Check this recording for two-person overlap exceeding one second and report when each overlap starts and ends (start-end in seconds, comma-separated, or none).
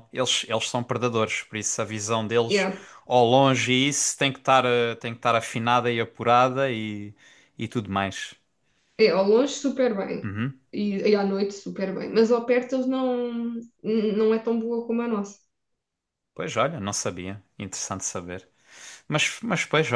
none